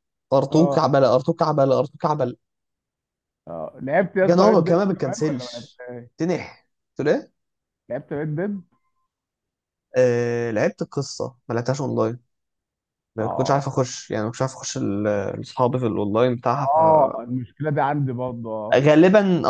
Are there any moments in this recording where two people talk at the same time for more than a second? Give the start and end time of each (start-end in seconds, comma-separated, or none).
4.3-5.8